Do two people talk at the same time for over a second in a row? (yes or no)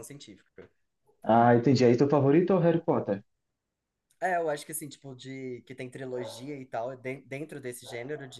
no